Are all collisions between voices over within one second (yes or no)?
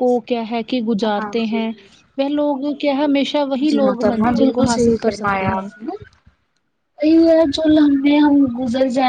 no